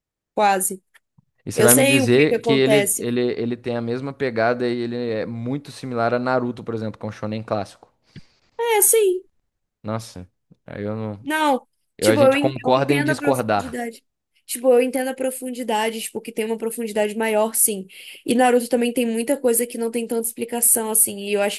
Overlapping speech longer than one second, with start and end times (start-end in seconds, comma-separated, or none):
1.5-3.1, 12.0-13.8